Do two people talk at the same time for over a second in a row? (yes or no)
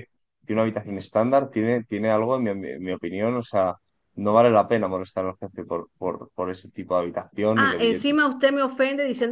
no